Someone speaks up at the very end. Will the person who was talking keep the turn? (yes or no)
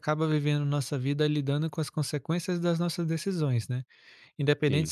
yes